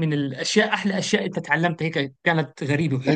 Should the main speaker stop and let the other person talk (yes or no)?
yes